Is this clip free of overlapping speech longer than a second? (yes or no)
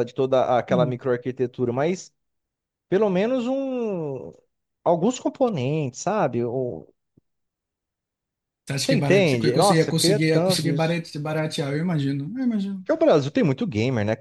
no